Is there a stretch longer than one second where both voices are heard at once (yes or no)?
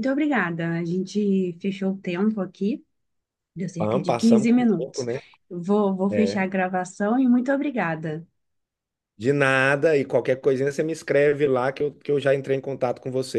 yes